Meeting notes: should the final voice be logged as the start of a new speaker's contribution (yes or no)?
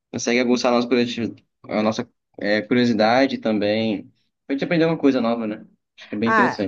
yes